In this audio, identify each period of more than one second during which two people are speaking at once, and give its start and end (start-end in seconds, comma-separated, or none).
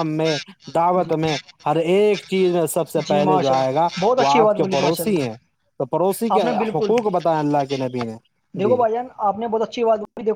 3.1-5.2